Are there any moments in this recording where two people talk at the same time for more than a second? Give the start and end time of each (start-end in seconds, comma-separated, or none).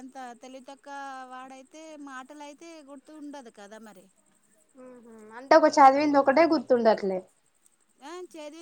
none